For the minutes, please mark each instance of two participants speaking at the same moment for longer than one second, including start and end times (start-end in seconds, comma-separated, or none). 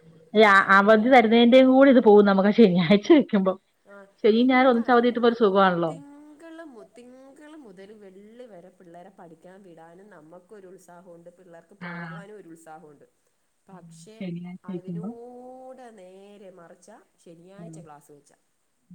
none